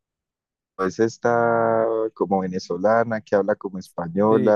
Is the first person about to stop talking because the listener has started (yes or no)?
no